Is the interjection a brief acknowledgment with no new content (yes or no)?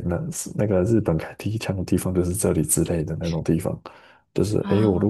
yes